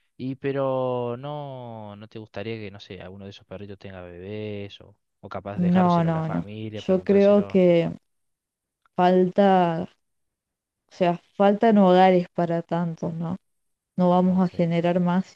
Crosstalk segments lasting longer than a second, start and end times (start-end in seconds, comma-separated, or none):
5.6-7.6